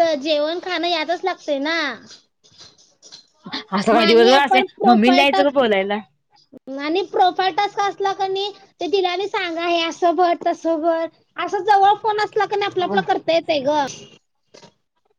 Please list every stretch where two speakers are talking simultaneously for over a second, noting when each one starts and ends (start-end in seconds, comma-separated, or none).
4.0-5.5